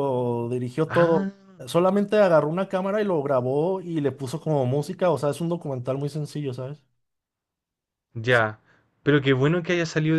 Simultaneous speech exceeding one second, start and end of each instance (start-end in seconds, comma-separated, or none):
none